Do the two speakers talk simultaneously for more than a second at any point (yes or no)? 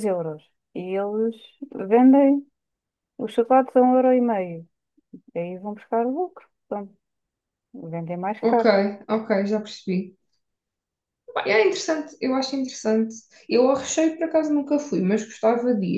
no